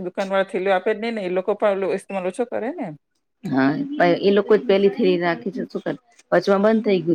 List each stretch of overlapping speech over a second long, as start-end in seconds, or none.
none